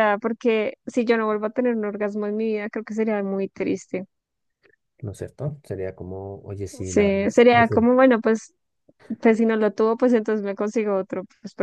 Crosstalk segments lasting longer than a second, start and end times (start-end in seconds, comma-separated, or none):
6.6-7.8